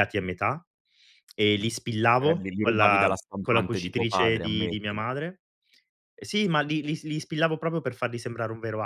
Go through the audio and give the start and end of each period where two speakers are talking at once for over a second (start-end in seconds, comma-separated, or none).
2.2-5.0